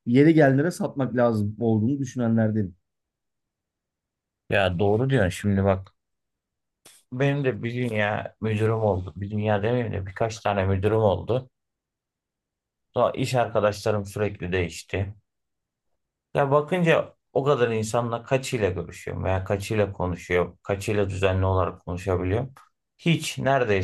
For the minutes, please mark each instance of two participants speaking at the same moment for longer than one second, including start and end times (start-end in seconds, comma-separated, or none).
none